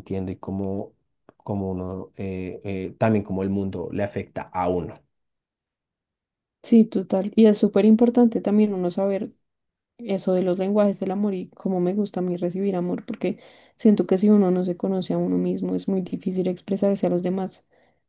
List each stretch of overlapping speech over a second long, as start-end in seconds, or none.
none